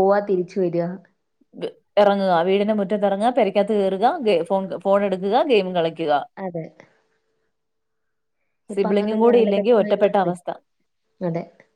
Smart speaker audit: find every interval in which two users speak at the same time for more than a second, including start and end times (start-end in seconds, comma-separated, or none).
8.8-10.3